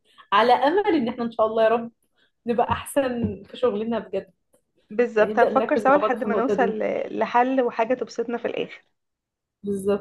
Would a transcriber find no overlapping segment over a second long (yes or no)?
no